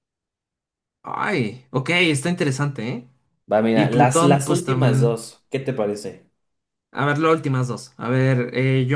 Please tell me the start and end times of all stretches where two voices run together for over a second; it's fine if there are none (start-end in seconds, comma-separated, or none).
3.7-5.2